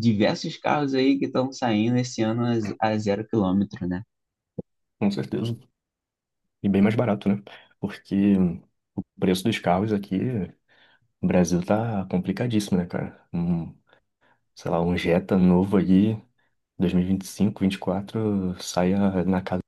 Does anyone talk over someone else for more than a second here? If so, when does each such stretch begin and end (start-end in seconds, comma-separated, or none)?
none